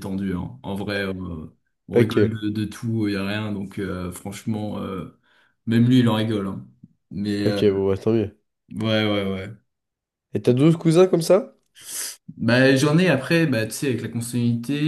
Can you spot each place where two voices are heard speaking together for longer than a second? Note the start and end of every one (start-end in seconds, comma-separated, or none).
none